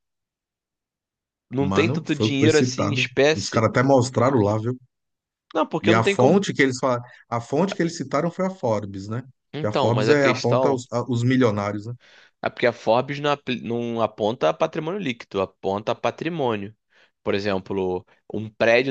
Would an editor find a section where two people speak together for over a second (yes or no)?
yes